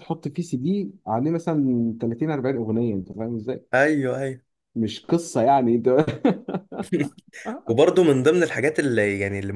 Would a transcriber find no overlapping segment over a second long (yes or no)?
yes